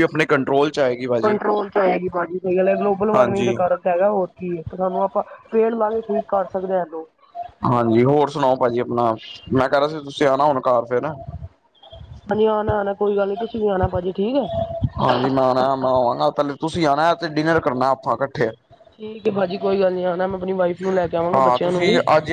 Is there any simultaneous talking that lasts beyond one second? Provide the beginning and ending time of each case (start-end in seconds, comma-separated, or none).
none